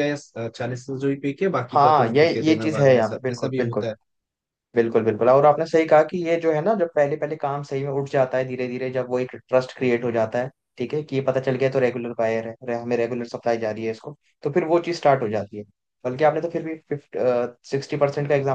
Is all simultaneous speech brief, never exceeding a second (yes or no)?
no